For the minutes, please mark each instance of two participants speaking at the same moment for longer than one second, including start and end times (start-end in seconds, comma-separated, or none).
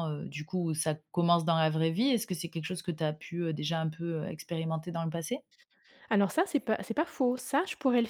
none